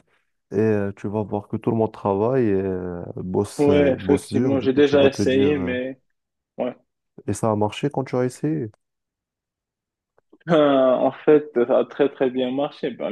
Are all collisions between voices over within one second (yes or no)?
no